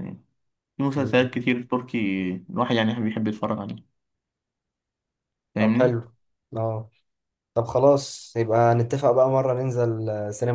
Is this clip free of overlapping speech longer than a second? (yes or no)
yes